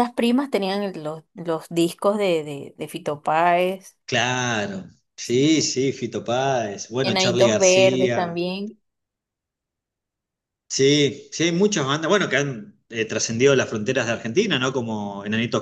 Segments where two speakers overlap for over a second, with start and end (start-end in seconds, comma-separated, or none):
7.0-8.4